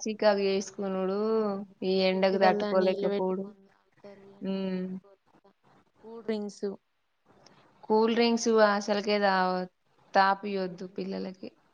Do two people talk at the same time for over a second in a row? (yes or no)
yes